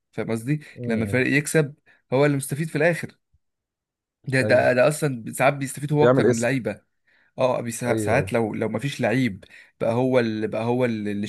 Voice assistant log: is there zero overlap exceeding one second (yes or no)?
yes